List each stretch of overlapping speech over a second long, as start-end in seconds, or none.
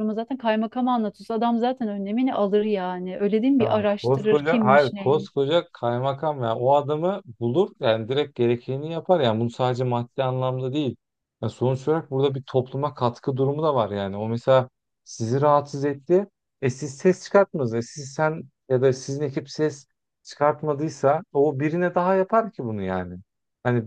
3.6-5.3